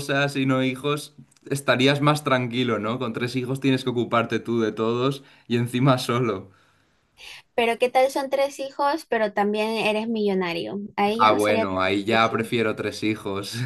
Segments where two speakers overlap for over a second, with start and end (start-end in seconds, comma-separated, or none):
11.2-12.5